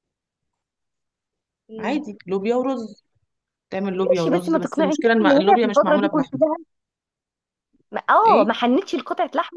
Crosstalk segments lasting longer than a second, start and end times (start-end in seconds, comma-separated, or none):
4.1-6.4